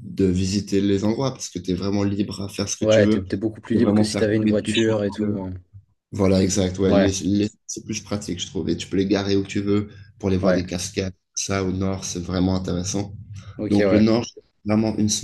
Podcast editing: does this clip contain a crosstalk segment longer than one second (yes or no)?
yes